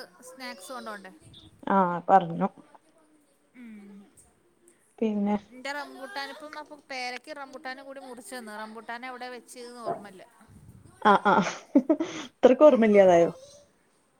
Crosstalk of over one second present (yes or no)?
no